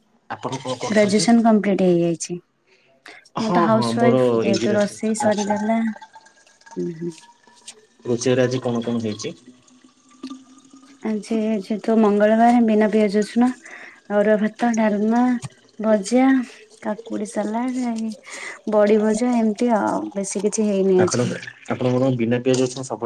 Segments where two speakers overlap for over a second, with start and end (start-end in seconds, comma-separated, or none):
3.4-5.5